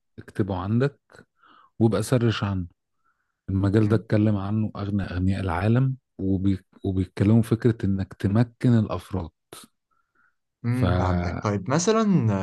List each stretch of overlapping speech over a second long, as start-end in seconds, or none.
none